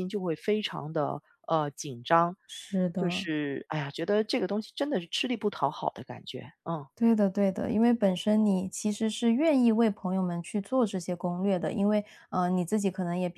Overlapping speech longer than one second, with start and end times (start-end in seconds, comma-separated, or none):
none